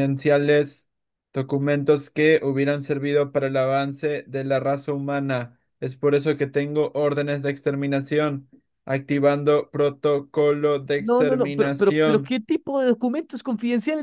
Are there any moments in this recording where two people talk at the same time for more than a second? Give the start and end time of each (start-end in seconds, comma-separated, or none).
11.0-12.3